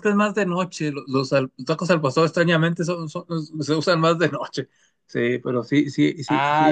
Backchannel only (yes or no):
no